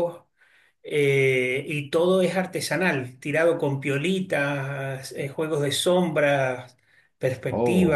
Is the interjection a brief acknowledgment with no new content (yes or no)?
yes